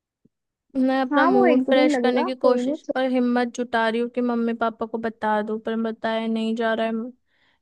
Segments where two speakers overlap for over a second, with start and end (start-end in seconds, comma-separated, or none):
1.1-2.8